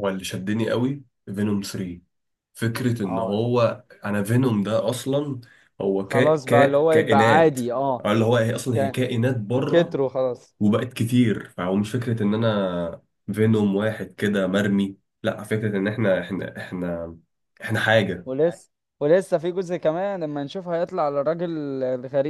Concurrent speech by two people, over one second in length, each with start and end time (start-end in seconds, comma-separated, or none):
6.0-7.6